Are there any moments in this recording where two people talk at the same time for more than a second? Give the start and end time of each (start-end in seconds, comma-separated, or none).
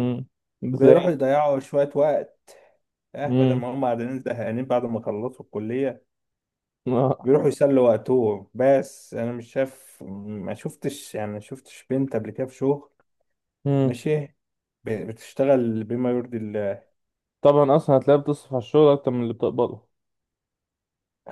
none